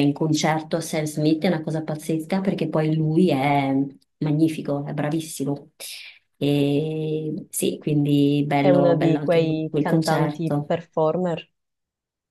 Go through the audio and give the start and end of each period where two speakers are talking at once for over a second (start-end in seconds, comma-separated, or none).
8.6-10.7